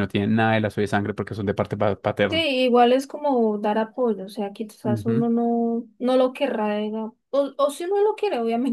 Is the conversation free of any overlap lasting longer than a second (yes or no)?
yes